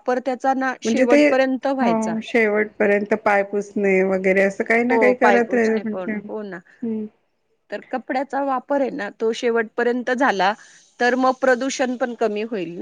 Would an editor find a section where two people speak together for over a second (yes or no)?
no